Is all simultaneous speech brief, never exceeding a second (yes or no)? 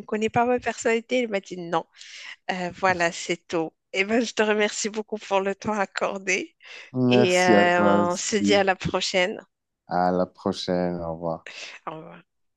no